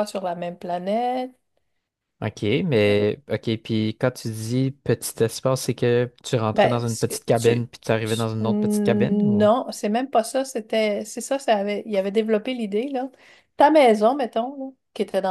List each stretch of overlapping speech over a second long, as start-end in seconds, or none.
6.5-9.5